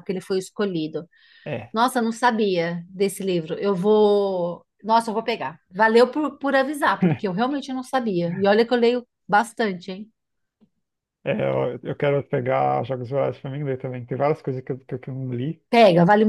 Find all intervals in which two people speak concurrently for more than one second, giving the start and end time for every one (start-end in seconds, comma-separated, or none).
none